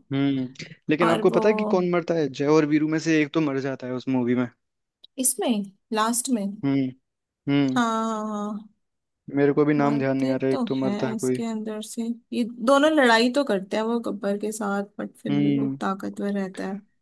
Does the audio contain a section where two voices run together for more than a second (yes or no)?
yes